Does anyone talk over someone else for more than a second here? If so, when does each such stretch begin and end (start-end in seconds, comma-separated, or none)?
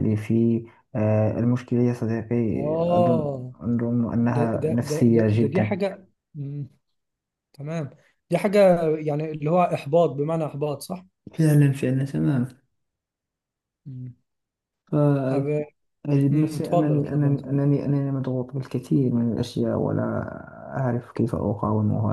4.3-5.8, 16.3-17.6